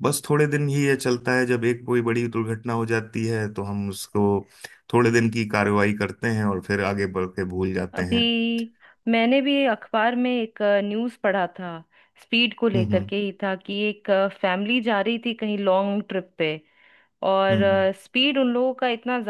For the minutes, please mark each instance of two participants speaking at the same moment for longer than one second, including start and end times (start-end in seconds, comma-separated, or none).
none